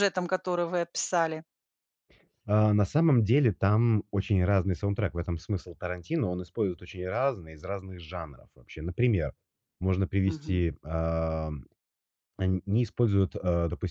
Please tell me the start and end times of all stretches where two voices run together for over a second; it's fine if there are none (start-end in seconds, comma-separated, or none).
none